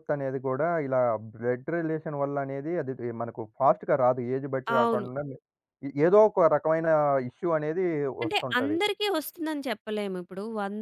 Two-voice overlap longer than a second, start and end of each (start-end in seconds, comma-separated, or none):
none